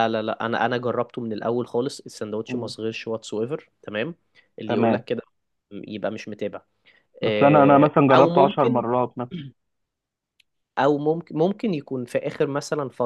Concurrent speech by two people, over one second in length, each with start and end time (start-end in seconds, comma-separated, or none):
7.2-8.8